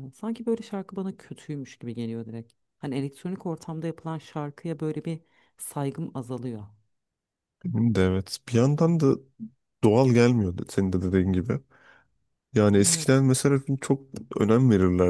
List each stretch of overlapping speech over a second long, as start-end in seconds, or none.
none